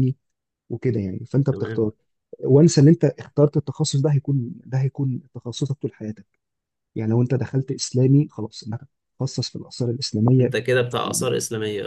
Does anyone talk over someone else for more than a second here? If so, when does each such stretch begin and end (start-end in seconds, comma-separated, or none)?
none